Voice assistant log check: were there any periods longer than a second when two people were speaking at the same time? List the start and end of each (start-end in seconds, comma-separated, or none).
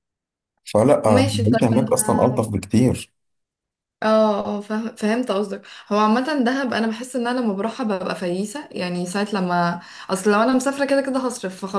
1.0-2.4